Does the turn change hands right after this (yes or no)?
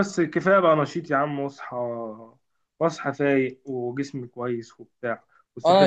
no